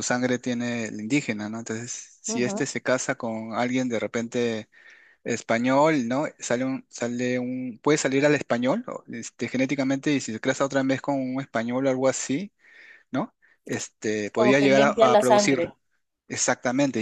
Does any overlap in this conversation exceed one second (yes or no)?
yes